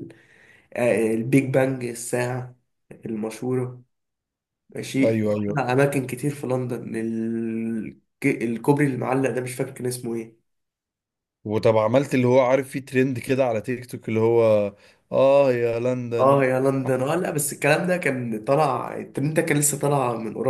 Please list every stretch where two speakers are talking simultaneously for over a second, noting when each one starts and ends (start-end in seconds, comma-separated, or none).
none